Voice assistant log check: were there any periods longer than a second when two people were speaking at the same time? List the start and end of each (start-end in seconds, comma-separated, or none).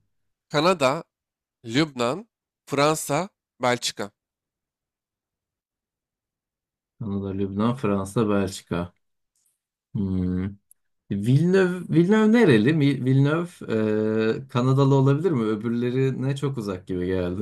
none